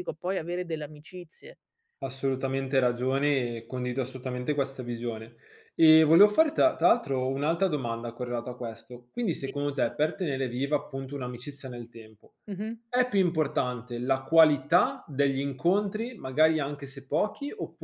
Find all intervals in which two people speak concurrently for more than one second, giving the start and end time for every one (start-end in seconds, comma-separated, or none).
none